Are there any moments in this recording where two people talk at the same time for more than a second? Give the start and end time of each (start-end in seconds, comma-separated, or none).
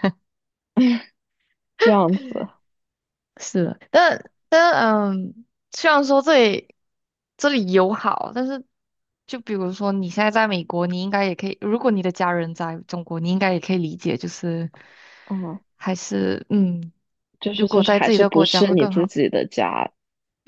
17.6-19.1